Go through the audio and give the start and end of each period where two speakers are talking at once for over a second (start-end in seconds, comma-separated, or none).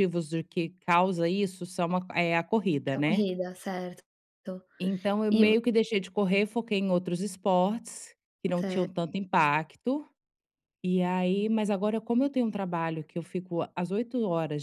none